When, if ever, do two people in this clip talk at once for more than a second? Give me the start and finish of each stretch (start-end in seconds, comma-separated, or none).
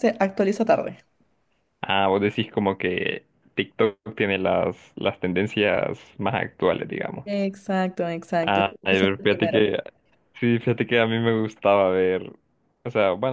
8.4-9.6